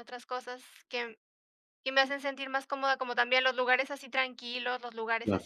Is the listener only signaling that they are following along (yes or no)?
yes